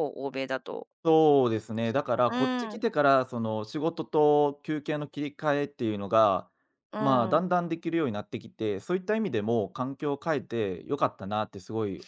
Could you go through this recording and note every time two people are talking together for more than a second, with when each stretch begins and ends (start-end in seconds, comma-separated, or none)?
none